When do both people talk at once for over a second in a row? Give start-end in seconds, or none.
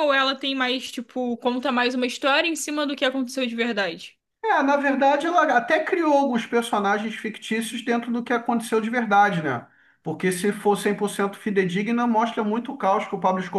none